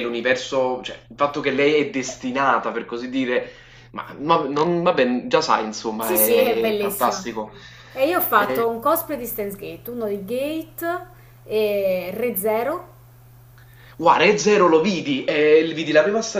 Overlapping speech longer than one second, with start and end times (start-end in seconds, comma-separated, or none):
6.0-7.3